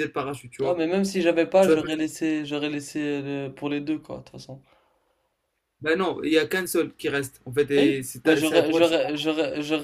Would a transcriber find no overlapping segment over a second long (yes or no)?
no